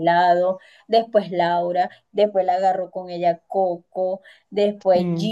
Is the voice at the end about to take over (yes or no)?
no